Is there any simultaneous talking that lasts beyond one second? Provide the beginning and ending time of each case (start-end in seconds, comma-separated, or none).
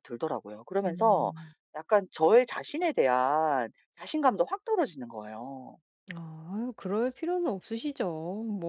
none